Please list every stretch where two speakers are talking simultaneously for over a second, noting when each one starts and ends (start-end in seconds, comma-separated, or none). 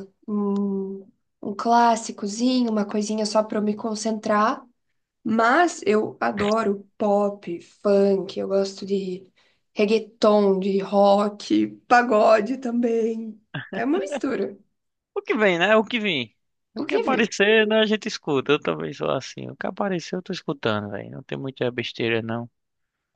none